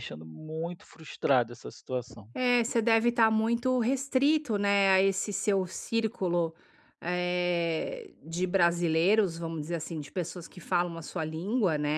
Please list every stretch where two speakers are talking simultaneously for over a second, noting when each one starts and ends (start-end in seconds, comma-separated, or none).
none